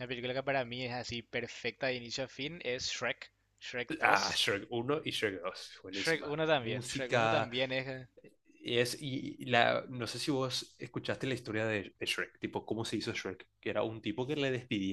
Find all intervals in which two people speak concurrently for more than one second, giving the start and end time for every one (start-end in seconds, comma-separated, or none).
5.9-7.5